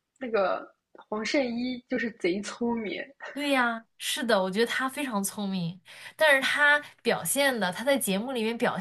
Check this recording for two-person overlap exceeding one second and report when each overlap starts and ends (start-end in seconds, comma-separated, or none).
none